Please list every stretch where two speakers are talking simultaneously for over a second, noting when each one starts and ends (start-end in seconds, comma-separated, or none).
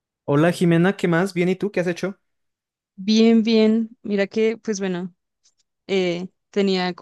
none